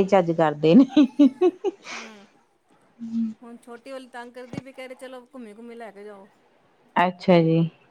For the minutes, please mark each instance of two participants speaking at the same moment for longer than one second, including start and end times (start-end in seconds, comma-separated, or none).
none